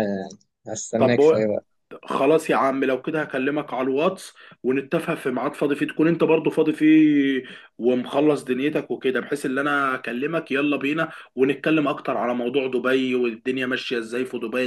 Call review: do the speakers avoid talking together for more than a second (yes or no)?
yes